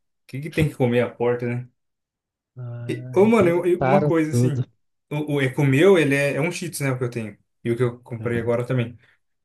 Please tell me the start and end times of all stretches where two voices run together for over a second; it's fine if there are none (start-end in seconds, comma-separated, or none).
2.9-4.6